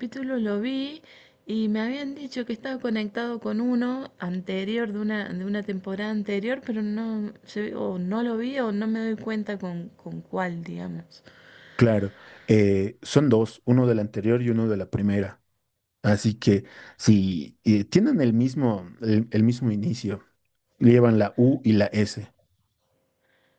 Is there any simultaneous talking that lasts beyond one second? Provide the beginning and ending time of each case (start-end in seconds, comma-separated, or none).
none